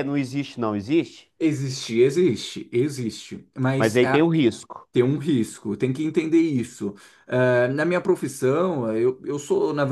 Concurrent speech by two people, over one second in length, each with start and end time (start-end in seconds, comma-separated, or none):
none